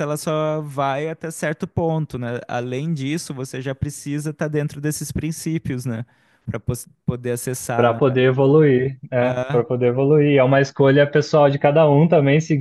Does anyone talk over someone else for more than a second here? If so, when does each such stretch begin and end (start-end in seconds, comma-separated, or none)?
none